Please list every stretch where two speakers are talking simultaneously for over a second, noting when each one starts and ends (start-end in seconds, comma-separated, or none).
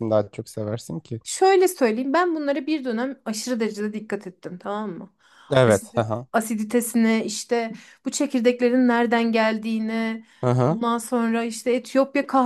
none